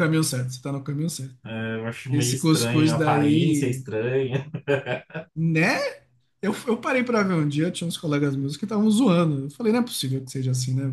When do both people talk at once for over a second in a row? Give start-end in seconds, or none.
2.1-3.8